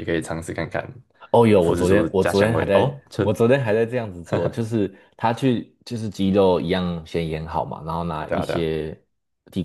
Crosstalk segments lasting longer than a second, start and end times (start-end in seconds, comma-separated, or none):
1.6-3.2